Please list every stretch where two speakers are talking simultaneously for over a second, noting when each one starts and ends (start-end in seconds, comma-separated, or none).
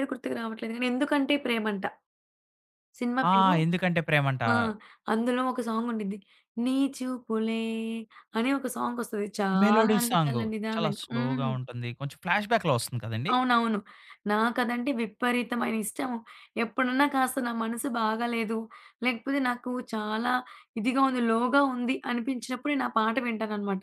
9.6-11.5